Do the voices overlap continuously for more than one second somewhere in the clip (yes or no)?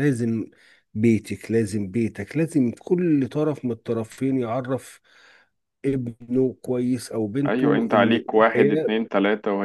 yes